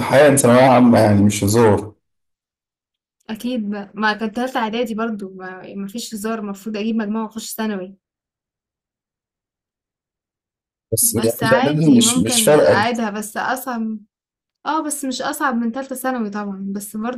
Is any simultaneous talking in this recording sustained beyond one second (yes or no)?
yes